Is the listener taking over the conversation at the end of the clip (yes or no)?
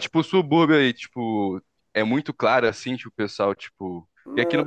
no